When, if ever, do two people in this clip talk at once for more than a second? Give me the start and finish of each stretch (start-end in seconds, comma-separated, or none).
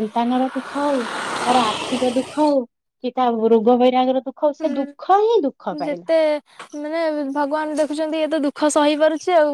4.6-6.1